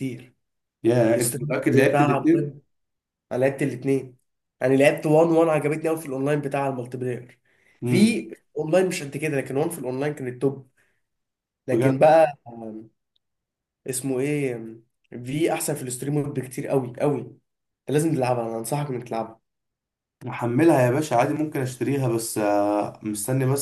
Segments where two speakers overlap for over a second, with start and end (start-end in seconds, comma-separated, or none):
1.1-2.6